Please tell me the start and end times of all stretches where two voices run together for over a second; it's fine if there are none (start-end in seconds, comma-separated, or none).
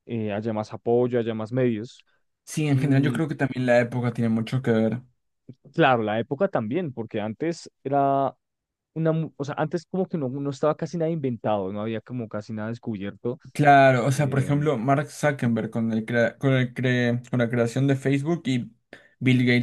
none